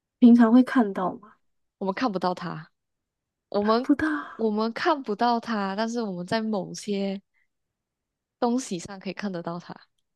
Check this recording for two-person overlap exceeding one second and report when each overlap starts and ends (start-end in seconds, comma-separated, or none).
none